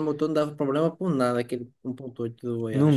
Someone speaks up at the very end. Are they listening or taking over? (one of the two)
taking over